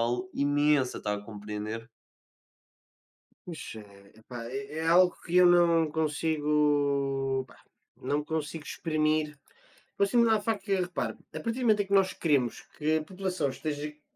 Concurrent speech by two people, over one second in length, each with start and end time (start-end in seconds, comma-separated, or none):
none